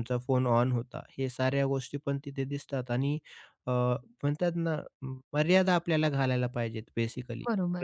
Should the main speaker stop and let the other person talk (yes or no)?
yes